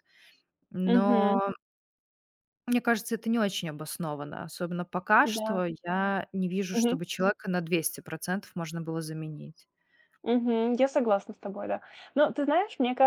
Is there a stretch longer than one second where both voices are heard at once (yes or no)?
no